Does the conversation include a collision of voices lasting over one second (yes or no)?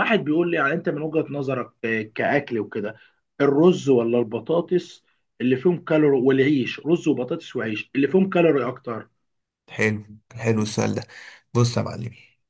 no